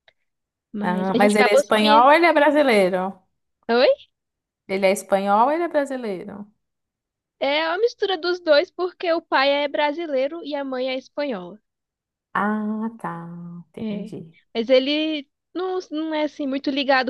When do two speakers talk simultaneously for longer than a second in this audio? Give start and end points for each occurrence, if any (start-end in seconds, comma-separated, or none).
0.8-2.1